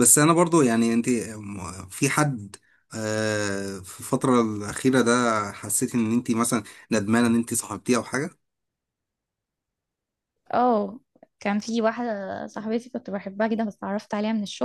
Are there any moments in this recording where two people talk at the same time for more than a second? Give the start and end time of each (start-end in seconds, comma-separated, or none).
none